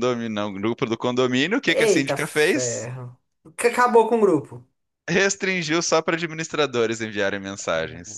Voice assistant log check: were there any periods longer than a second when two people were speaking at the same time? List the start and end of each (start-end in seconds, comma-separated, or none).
1.7-2.9